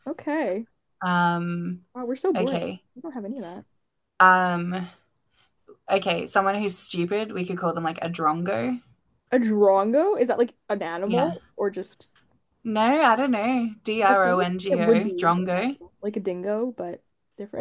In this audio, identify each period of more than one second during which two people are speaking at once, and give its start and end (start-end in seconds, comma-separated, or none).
14.0-15.8